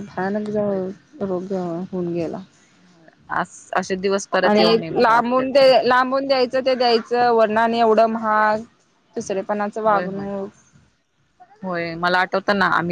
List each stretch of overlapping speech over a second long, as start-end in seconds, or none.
none